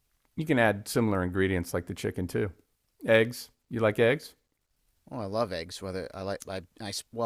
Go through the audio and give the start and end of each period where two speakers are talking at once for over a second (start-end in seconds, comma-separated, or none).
none